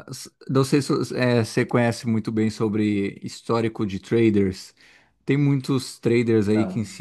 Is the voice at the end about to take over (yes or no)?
no